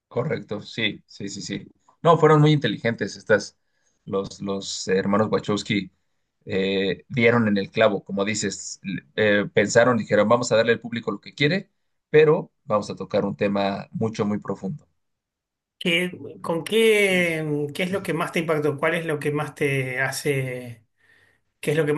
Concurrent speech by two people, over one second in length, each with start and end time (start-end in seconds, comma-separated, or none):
none